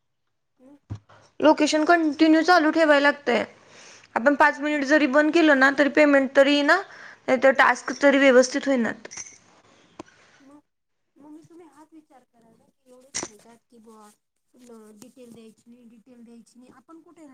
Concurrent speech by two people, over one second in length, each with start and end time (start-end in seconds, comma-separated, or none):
none